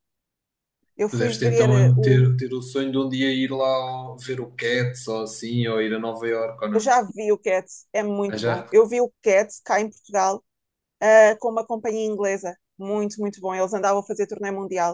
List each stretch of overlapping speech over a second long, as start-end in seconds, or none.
1.1-2.3